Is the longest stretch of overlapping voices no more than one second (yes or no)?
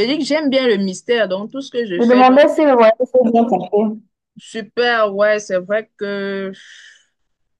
yes